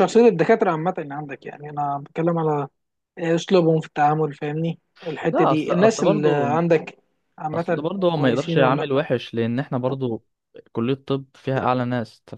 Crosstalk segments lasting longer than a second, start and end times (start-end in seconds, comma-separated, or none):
5.3-6.6, 7.5-8.9